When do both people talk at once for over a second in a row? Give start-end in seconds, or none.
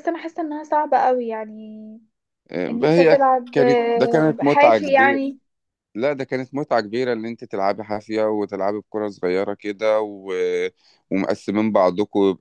2.7-5.2